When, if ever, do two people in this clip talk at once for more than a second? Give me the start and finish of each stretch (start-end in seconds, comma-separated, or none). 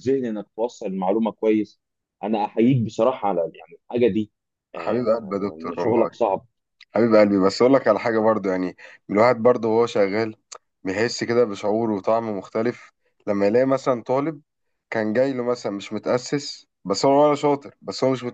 4.7-6.1